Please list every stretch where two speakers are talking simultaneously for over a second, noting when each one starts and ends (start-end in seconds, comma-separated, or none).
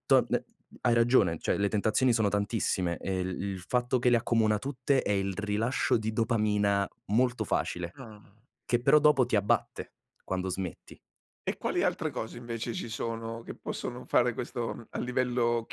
none